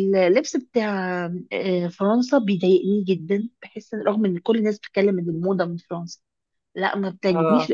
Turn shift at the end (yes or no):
no